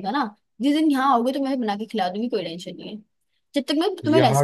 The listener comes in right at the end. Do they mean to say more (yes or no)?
no